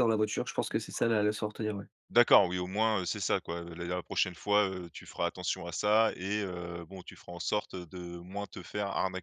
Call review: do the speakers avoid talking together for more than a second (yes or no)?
yes